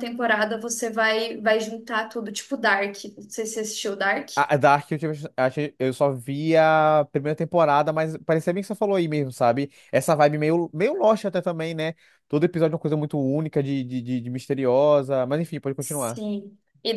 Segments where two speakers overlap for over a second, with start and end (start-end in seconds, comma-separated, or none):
none